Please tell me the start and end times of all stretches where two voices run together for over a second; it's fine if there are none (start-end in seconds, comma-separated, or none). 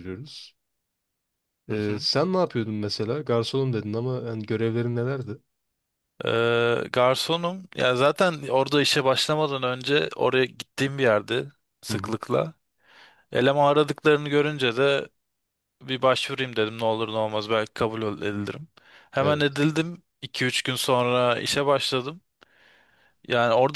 none